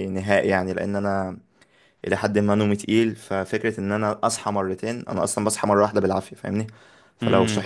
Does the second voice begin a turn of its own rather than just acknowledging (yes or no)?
no